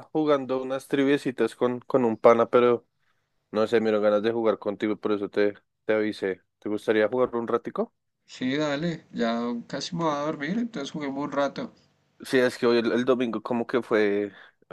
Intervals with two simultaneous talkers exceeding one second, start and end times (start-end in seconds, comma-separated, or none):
none